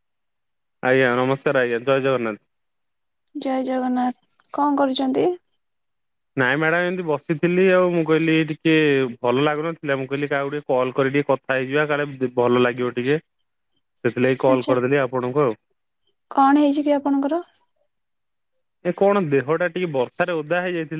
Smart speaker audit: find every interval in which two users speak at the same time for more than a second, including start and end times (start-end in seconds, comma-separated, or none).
none